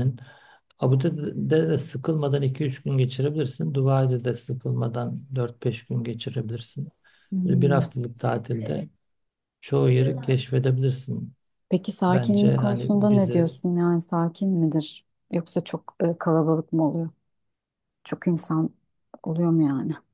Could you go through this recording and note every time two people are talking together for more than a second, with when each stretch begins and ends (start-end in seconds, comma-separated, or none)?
12.1-13.5